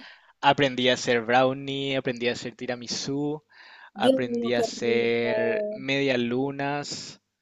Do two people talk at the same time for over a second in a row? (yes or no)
yes